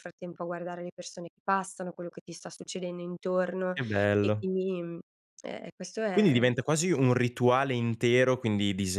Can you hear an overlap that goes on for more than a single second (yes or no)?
no